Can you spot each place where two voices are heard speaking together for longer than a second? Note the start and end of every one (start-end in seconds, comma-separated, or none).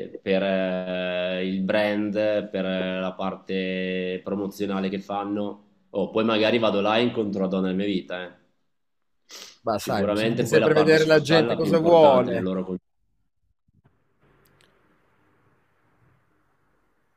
9.8-12.5